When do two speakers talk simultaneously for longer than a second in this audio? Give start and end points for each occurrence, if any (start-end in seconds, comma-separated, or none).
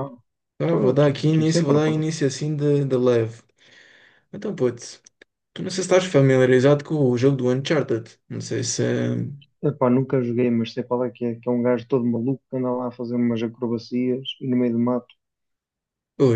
0.6-2.1